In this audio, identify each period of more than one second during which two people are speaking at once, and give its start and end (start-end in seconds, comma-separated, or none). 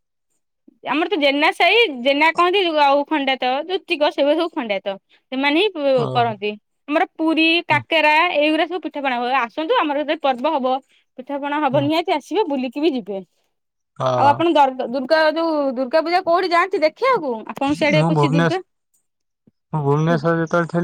none